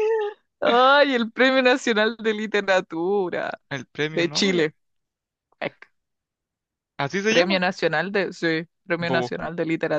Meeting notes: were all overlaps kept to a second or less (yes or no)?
yes